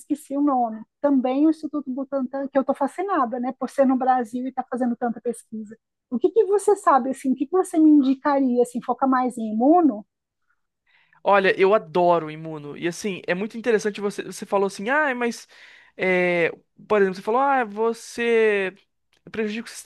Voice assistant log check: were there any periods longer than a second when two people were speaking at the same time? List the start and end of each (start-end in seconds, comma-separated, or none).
none